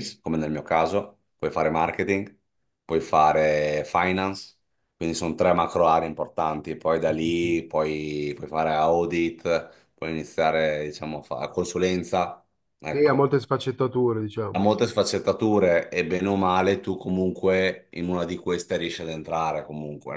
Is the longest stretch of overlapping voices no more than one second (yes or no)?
yes